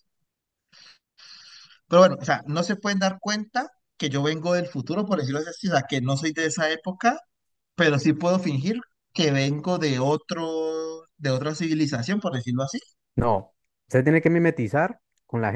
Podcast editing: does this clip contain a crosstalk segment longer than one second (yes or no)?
no